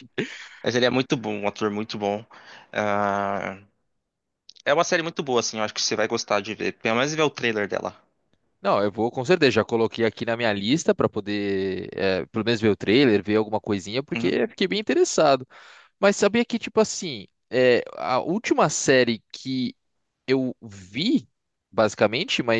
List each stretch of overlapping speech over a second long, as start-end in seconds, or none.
none